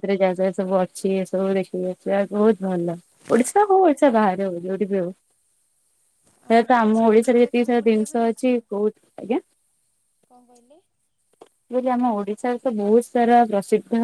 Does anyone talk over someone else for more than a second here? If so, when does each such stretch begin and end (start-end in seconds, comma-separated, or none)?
6.5-8.4